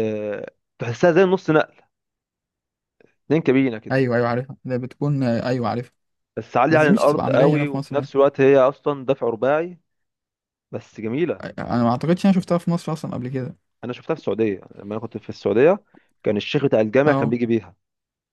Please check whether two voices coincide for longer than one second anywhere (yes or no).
yes